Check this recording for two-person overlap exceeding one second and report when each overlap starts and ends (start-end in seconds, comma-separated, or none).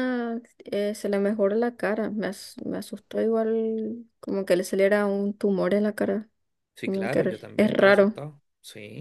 6.8-8.2